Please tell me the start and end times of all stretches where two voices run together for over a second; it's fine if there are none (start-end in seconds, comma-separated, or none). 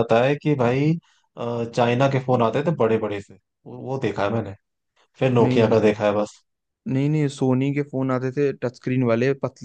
none